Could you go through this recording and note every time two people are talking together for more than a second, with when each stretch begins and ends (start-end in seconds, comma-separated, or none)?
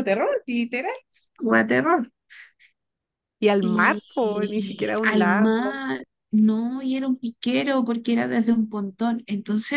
3.6-5.8